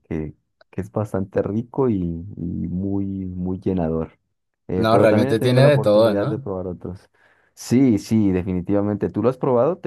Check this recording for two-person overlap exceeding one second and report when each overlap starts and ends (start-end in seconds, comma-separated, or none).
4.8-6.5